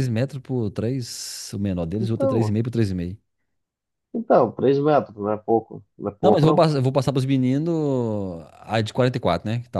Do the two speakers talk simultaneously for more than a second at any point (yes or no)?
no